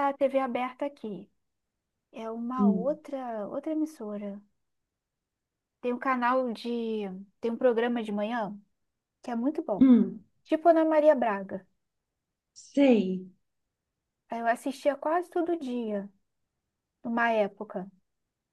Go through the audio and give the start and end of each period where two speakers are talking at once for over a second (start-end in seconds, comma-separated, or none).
none